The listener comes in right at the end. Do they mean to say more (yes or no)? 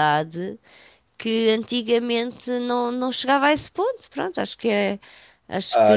yes